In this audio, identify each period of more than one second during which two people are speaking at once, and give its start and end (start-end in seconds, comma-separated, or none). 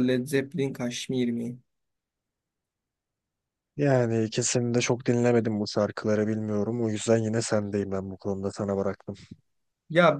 none